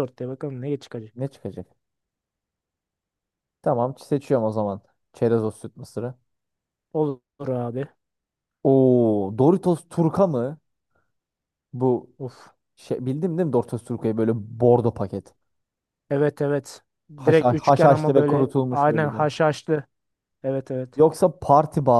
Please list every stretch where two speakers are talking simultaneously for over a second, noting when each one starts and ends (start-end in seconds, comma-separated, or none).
17.2-19.2